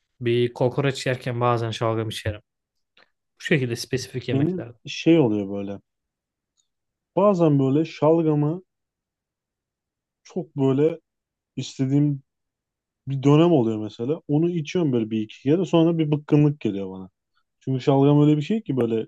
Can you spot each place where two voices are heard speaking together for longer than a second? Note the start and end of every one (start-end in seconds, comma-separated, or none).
none